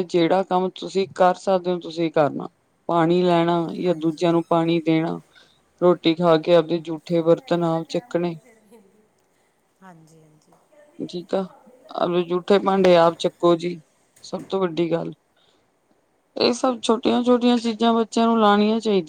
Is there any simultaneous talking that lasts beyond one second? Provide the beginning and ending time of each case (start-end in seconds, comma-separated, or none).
none